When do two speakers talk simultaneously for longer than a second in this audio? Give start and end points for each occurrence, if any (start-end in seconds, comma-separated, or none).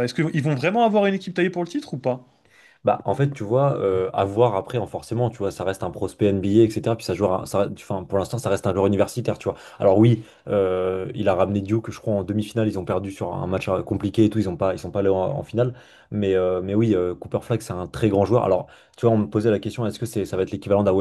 none